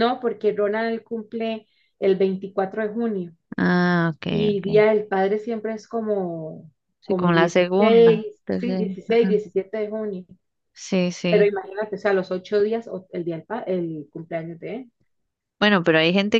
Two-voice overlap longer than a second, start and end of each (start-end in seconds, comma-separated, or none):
7.0-9.4